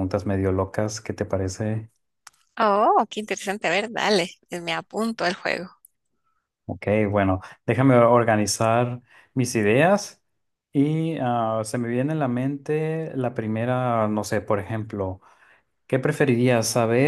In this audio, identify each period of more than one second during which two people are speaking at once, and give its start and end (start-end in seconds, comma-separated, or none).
none